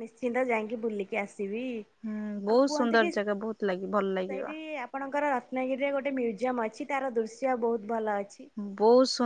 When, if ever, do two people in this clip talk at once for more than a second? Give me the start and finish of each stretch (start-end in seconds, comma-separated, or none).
2.5-4.4